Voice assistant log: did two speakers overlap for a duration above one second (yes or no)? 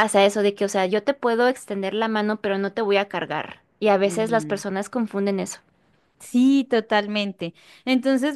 no